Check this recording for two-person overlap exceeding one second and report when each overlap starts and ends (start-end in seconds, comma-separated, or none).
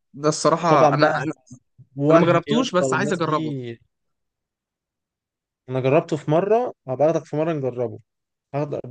2.1-3.5